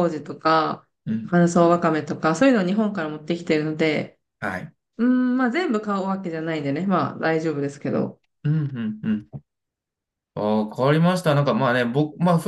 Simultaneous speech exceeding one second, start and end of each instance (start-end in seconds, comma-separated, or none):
none